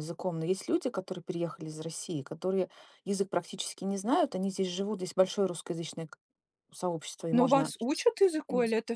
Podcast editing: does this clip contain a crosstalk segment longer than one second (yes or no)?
no